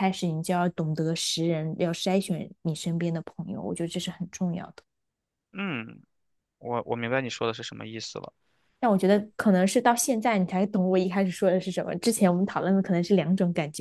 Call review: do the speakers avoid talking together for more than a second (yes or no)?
yes